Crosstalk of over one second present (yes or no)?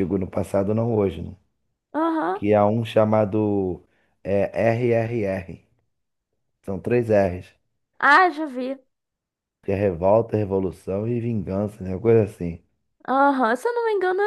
no